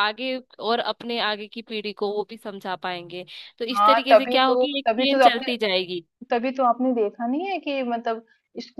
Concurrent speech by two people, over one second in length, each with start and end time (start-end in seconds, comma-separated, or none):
3.8-5.5